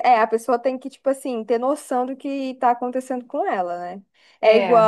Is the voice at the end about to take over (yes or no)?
no